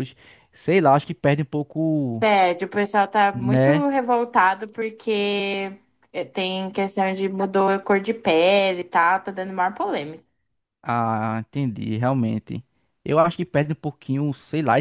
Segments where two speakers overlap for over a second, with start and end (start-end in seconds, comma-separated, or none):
none